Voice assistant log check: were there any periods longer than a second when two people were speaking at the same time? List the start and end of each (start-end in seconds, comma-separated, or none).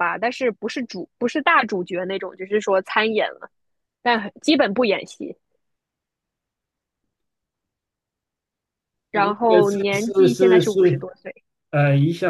9.1-11.1